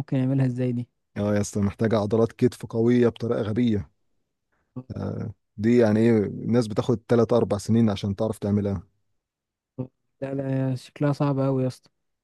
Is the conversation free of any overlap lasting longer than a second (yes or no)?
yes